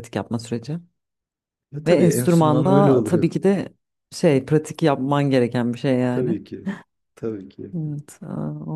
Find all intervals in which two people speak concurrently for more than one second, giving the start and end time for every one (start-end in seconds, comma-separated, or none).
1.9-3.3